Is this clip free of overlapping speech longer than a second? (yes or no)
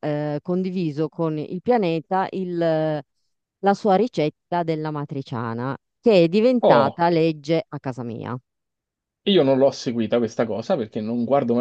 yes